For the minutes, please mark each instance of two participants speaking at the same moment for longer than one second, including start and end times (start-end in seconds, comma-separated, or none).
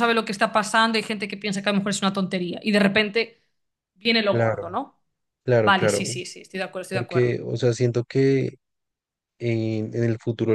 none